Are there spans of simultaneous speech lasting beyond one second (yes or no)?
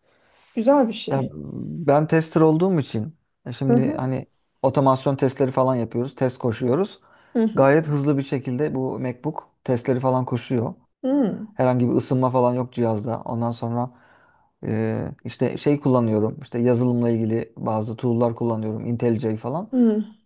no